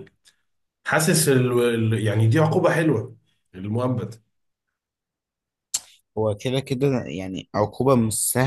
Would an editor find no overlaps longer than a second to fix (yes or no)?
yes